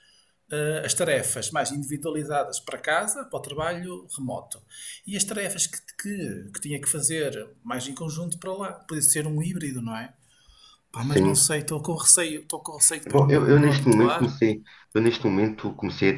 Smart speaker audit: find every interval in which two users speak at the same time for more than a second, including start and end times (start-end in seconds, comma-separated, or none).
13.1-14.4